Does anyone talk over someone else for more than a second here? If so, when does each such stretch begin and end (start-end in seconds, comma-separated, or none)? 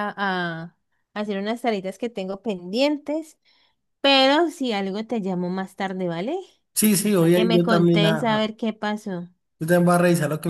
7.2-8.5